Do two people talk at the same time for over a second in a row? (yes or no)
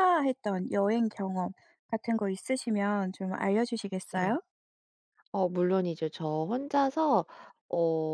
no